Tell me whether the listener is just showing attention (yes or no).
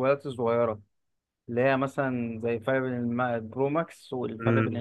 no